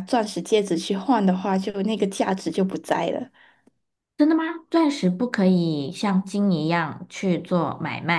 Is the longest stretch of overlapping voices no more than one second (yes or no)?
yes